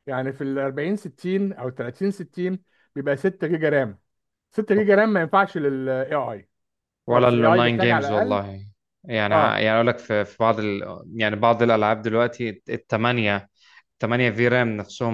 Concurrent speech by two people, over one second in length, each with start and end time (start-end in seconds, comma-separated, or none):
7.1-8.4